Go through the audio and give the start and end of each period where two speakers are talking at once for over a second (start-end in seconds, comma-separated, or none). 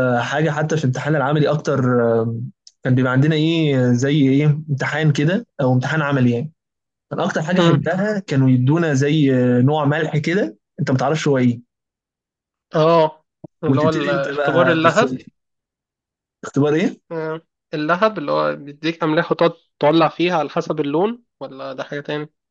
13.7-15.0